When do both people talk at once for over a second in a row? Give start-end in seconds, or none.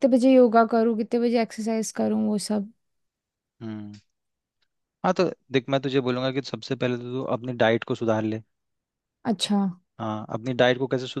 none